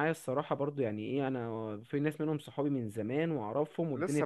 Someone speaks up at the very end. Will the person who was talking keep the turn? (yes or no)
no